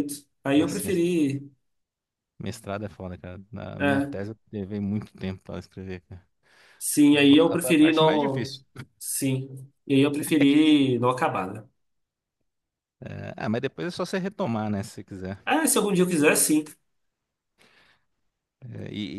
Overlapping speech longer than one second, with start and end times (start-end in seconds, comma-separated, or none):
7.3-8.5